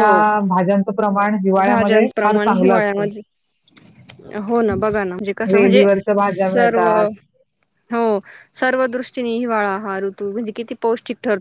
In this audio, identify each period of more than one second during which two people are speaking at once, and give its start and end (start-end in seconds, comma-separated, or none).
1.7-3.1